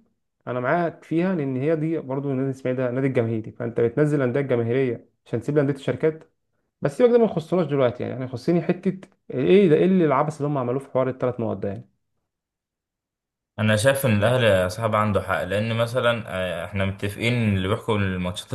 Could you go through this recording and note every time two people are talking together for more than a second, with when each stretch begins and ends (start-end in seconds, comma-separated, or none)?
none